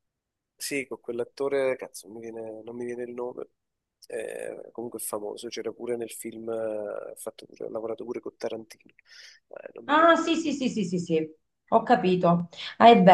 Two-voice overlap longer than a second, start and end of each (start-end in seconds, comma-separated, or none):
none